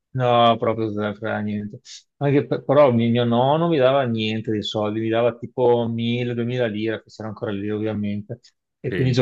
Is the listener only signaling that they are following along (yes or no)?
yes